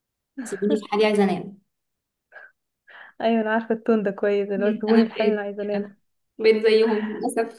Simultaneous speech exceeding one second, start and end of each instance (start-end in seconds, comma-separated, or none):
4.6-5.9